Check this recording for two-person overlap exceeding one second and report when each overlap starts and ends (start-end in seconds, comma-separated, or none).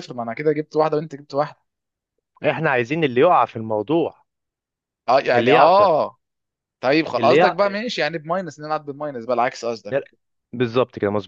none